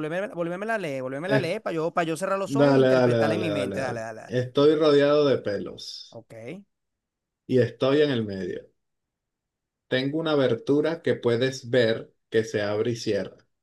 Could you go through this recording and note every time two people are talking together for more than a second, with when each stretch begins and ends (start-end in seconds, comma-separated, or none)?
2.5-4.4